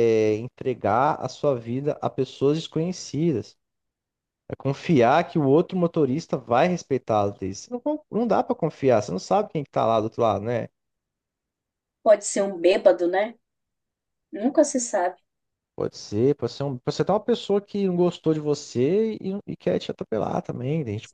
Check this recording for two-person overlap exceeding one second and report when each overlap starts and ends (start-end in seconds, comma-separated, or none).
none